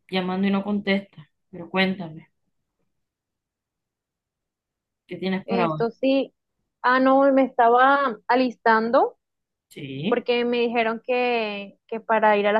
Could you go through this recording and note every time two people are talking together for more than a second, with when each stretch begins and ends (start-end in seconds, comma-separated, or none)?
none